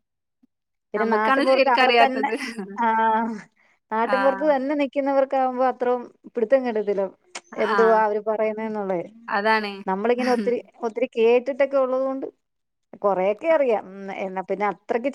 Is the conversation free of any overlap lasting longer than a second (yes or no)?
no